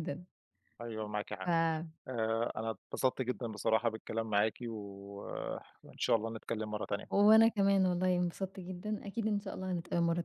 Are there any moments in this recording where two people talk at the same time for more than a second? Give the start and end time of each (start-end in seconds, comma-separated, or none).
none